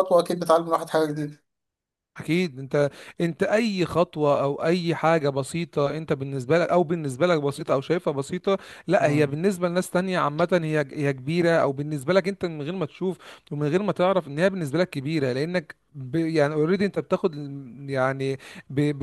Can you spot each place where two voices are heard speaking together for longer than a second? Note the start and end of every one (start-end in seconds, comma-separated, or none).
none